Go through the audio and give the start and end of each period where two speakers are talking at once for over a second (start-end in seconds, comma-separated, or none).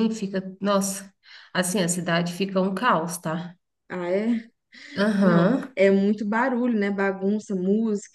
none